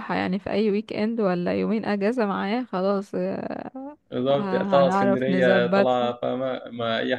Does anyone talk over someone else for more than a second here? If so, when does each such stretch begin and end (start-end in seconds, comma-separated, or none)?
4.4-6.1